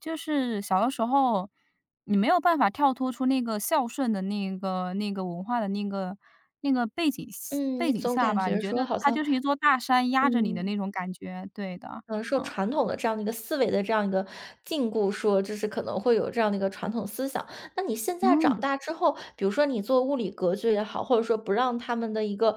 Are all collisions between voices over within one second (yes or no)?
no